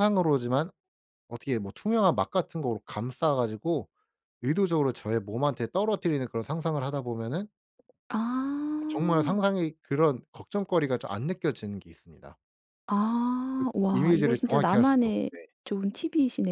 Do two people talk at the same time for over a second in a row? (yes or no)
yes